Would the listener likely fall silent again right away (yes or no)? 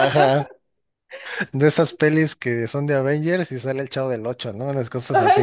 no